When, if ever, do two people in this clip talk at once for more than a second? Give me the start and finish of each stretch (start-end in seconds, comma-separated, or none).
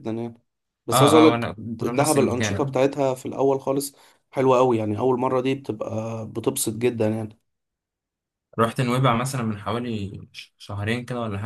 0.9-2.8